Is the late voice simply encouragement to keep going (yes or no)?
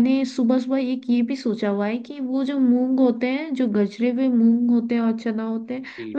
yes